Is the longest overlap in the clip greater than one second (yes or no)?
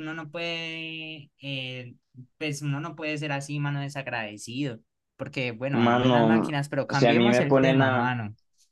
yes